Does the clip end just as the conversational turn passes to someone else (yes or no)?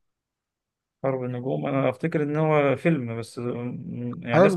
yes